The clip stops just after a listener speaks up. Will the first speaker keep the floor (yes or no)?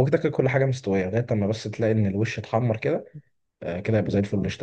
no